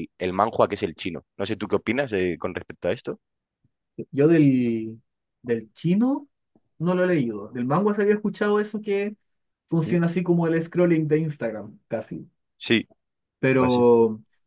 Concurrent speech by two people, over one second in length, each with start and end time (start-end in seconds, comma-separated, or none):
none